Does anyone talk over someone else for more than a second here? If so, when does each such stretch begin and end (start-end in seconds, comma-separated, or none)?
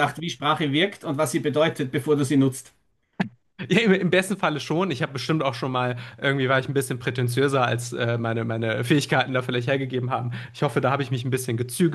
none